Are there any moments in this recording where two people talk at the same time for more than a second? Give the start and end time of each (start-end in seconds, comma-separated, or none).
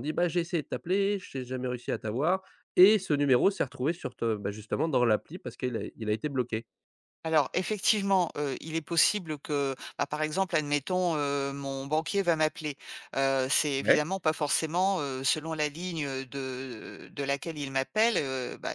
none